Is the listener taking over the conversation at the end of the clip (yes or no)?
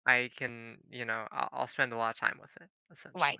yes